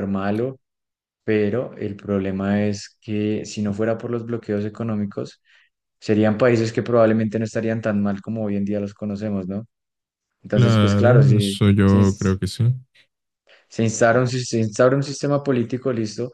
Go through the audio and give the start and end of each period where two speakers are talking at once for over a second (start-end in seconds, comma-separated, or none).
10.5-12.0